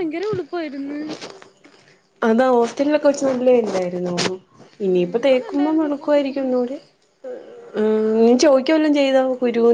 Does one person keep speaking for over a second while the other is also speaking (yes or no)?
yes